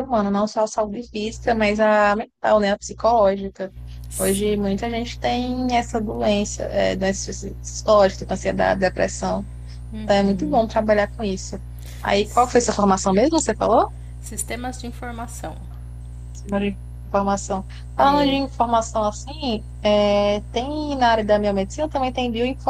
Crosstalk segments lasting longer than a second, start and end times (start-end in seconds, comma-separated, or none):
none